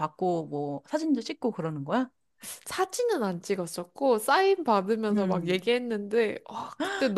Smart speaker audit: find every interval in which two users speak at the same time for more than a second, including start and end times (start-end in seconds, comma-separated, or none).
none